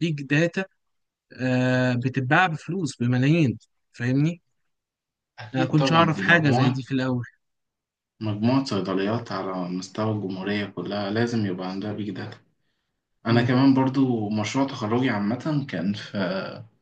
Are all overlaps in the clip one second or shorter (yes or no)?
no